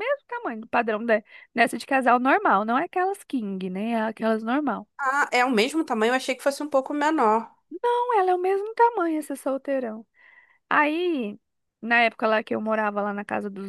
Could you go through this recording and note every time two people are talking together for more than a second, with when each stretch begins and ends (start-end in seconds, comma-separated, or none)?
none